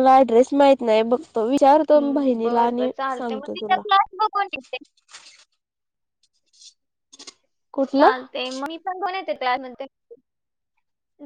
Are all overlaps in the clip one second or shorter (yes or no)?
no